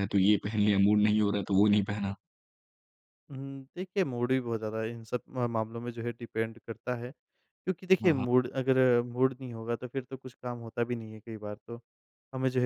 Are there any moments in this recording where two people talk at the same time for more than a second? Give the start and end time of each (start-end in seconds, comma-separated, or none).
none